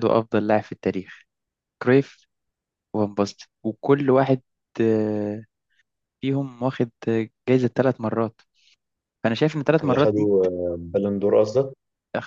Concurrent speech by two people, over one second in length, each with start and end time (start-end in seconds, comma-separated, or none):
none